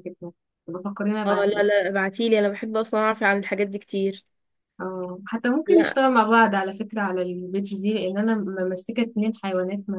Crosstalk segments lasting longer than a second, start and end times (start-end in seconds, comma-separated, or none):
none